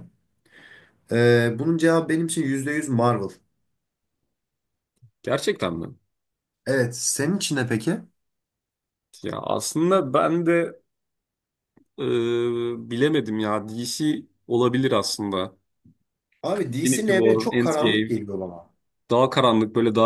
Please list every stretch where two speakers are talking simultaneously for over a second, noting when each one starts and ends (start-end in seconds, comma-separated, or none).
16.7-18.2